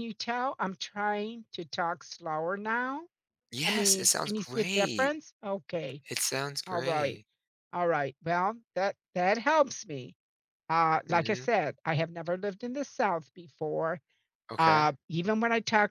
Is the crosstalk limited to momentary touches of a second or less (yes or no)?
no